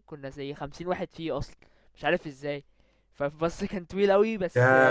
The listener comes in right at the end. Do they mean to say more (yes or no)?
yes